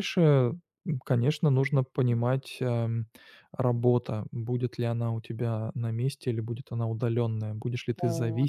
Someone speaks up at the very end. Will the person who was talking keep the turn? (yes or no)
yes